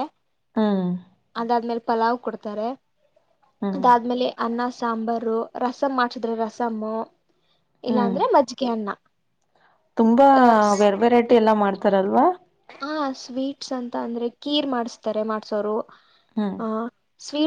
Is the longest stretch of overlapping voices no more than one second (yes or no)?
yes